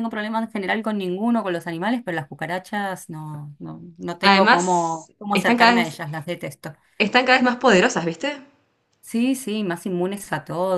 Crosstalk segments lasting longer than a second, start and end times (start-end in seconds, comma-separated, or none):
4.2-6.0